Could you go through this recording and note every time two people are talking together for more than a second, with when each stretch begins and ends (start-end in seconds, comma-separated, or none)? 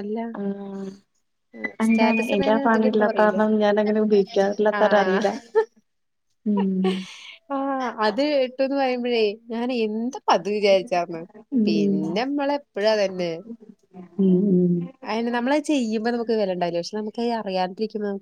1.9-3.4